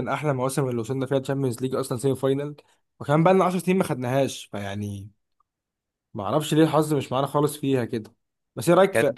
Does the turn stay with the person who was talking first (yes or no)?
yes